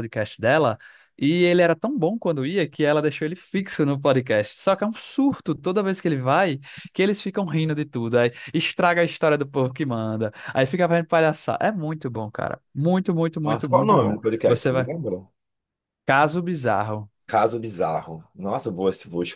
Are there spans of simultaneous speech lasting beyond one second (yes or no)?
yes